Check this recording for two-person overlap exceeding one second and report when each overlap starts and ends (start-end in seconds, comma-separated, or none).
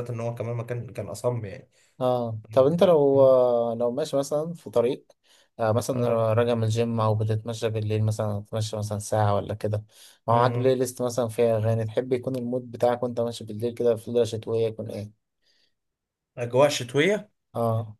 none